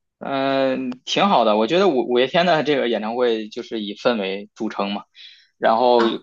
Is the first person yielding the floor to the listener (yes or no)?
no